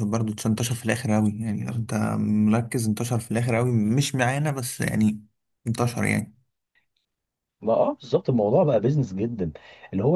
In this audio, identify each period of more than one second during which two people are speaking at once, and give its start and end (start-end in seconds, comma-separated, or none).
none